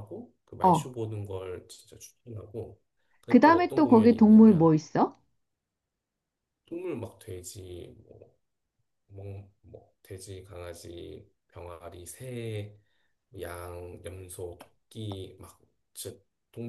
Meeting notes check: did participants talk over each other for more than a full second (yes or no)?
yes